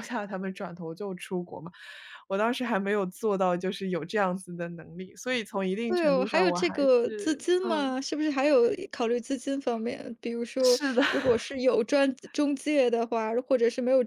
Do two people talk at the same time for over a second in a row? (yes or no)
yes